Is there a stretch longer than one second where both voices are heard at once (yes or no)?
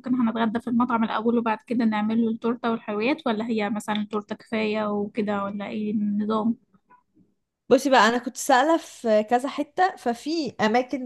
no